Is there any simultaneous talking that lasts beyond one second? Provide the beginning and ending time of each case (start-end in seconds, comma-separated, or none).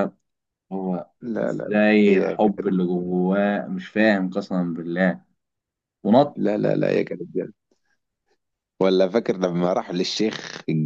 1.4-2.8